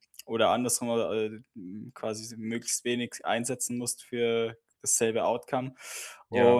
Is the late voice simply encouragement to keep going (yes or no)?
yes